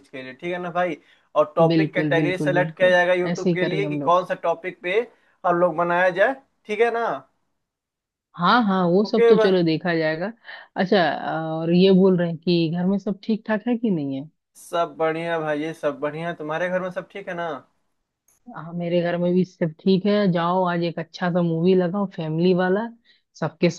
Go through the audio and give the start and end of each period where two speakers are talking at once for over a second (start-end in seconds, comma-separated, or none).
1.7-4.2